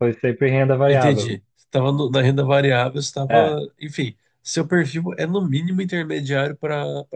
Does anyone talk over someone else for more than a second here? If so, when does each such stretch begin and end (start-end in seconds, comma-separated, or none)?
none